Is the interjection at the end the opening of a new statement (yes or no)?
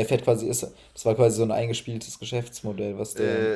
yes